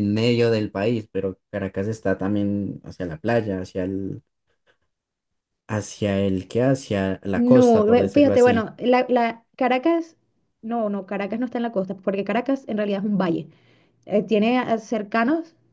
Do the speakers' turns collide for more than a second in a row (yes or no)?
yes